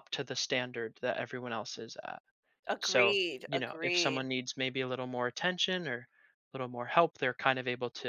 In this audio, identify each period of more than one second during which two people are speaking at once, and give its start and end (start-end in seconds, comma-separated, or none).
2.8-4.3